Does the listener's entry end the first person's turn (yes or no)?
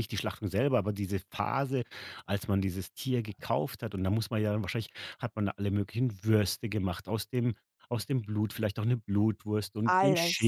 no